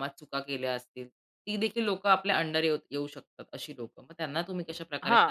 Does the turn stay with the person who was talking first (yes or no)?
no